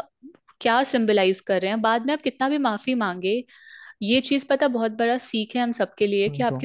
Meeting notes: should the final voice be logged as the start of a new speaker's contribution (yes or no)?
no